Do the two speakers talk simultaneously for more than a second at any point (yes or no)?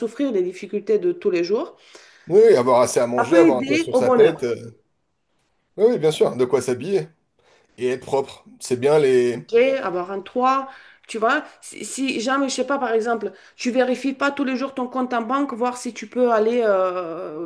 yes